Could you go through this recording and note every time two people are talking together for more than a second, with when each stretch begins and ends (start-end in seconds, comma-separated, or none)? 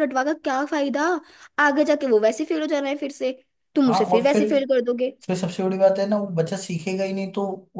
none